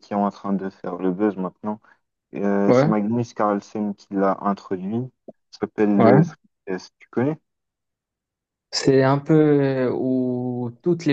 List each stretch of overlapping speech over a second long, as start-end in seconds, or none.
none